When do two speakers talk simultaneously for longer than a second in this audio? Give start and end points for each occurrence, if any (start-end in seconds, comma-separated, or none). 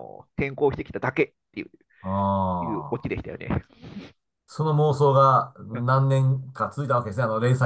none